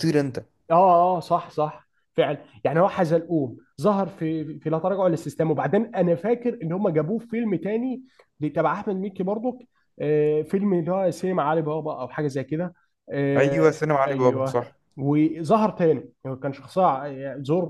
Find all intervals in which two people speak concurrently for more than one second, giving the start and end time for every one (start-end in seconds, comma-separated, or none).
13.4-14.7